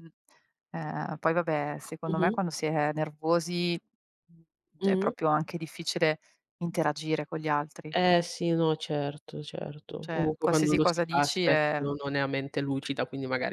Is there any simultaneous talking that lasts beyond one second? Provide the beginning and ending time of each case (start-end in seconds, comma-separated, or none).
10.0-11.5